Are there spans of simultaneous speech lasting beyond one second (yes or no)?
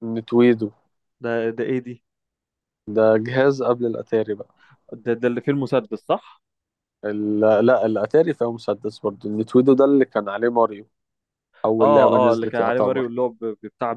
yes